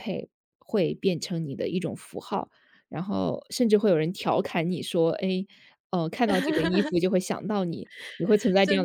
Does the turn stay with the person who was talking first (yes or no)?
no